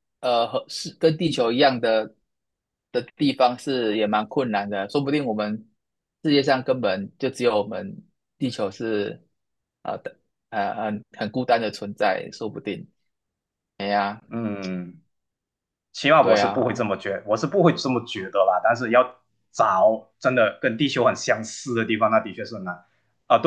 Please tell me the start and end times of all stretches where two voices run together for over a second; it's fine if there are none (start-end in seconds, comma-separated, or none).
none